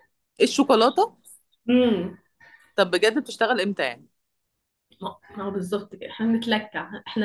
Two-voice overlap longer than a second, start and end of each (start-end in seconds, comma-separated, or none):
none